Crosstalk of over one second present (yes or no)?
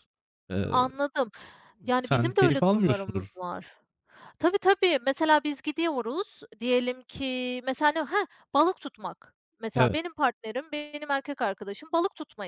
yes